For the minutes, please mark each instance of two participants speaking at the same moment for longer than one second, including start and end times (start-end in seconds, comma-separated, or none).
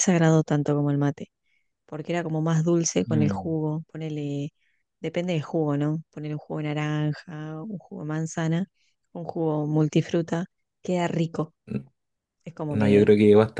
none